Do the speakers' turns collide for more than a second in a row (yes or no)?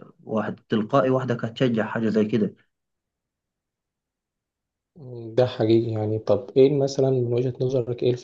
no